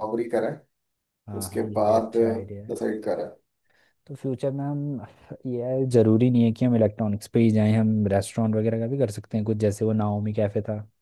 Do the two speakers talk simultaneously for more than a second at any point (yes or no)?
yes